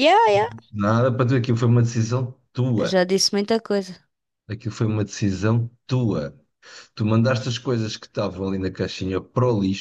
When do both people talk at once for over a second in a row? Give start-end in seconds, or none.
none